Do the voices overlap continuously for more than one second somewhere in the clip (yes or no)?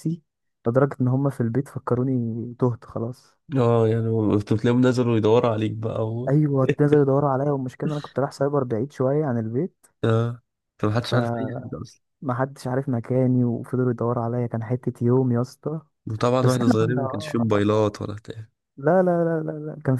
yes